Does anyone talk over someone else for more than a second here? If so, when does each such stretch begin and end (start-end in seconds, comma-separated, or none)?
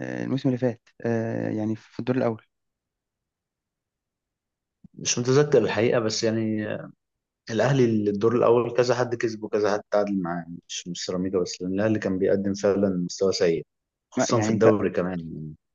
none